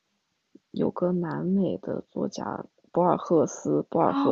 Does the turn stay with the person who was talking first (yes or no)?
no